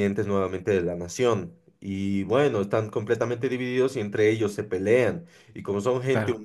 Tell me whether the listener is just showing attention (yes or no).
yes